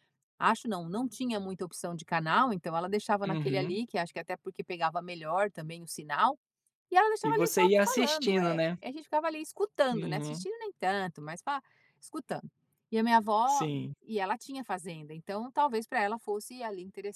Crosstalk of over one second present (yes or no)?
yes